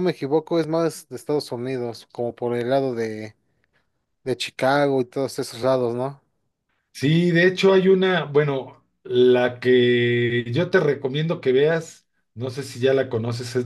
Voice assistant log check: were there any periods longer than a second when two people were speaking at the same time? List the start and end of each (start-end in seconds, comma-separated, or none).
none